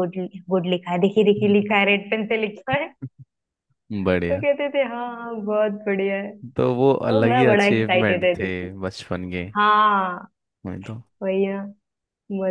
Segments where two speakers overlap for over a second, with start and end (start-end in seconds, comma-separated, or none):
7.1-8.7